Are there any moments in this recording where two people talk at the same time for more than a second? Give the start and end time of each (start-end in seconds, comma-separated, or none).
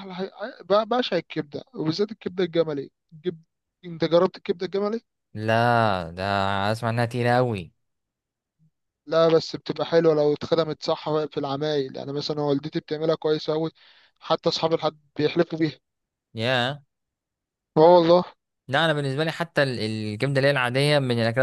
none